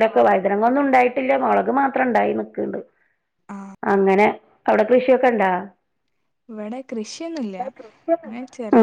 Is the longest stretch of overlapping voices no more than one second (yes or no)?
yes